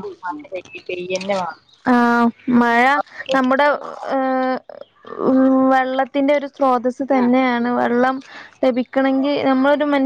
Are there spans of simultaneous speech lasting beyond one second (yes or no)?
no